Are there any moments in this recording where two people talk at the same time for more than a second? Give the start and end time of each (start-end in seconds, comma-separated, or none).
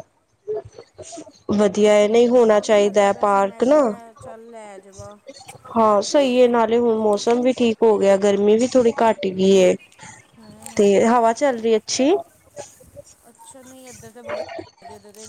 1.8-3.8